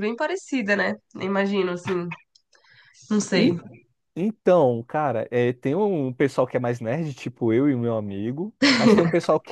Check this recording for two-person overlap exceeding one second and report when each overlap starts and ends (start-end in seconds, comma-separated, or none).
none